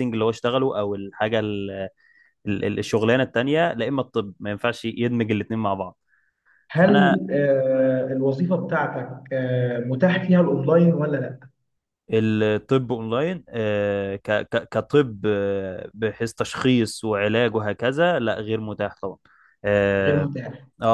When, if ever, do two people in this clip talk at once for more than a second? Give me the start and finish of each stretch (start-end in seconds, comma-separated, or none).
none